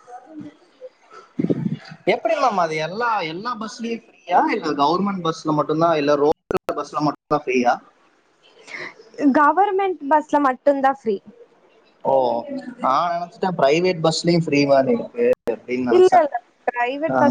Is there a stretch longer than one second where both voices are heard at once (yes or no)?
no